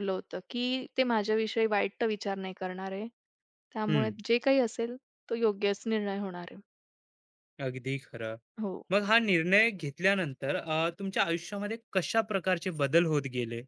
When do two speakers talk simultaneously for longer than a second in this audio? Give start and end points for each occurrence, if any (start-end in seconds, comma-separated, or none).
none